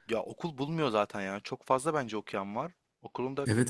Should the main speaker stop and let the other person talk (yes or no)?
yes